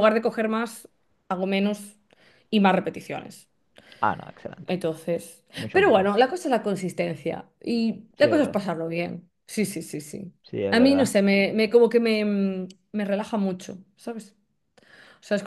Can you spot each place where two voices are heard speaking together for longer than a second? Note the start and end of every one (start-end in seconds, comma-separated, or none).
none